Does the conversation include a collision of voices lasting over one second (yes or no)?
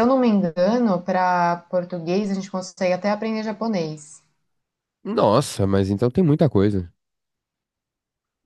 no